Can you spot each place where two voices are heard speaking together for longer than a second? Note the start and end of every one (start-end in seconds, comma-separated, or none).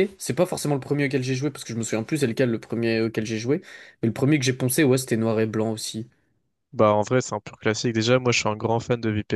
none